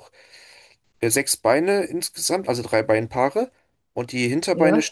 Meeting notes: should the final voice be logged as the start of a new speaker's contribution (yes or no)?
no